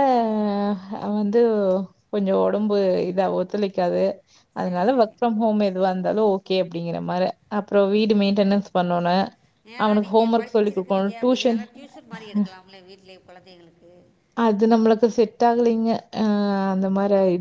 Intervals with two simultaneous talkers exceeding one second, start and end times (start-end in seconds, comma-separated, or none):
9.8-11.6